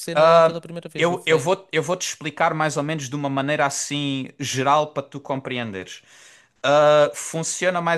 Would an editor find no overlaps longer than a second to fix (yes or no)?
yes